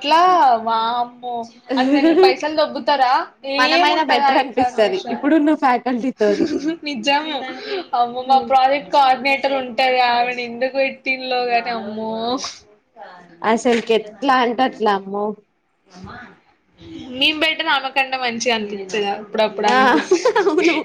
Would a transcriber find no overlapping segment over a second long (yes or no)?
no